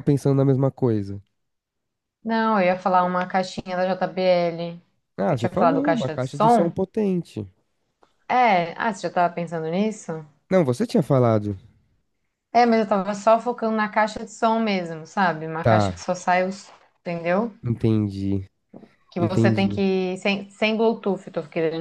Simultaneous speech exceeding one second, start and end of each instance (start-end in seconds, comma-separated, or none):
5.3-6.7